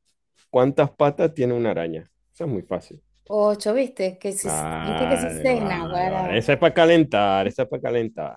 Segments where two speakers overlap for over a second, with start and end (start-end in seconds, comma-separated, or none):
4.4-6.5